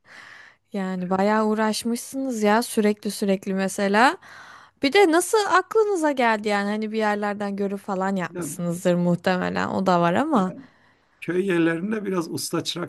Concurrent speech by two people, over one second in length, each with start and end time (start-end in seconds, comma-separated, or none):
none